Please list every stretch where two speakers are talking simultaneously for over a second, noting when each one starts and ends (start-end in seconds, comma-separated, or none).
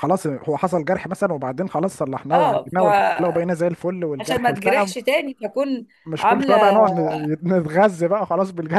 2.3-3.7